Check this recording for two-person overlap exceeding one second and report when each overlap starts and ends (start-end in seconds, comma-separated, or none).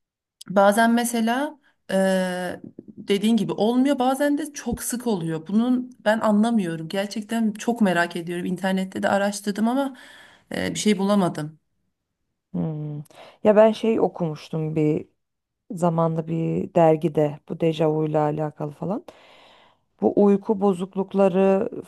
none